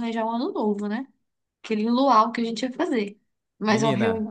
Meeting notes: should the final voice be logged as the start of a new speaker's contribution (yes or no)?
yes